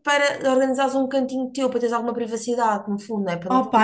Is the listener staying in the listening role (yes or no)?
no